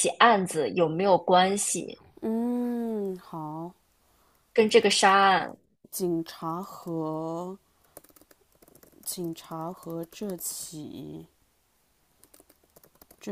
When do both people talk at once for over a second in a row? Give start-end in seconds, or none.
none